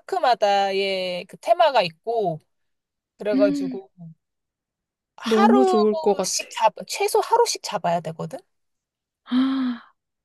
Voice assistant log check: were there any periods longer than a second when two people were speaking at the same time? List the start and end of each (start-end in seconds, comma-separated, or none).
5.2-6.5